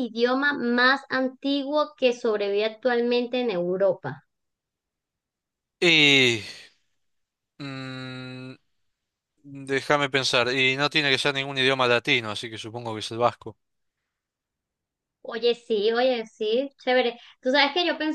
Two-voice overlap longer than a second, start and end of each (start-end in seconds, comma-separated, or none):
none